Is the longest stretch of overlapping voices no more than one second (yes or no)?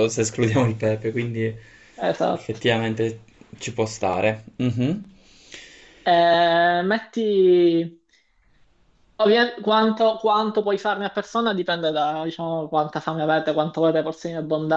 yes